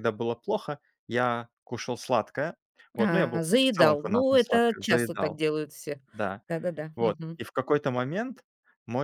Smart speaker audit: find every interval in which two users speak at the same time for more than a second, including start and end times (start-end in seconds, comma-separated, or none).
3.0-5.4